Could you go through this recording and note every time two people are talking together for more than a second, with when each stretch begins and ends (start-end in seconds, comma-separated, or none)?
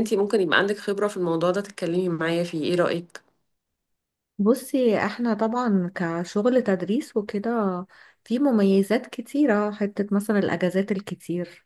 none